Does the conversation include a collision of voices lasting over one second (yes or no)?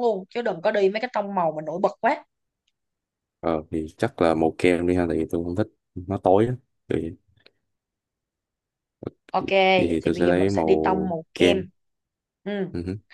yes